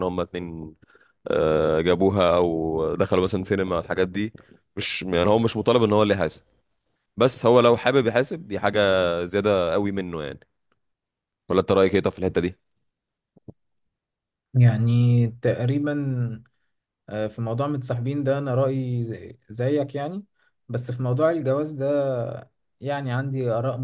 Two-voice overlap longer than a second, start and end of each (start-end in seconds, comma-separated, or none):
none